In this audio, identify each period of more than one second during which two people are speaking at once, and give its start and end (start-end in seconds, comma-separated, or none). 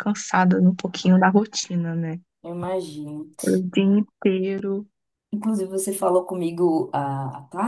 none